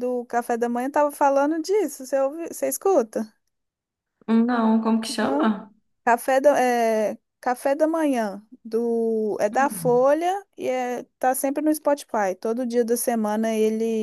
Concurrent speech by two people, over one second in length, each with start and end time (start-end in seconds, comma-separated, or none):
none